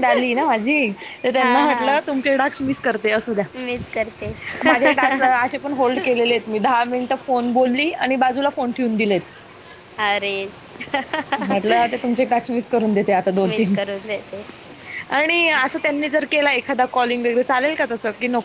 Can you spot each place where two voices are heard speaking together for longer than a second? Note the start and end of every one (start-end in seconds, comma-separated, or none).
none